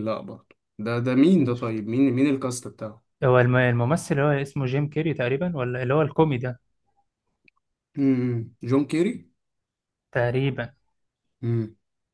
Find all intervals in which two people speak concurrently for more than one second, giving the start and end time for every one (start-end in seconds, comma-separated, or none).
none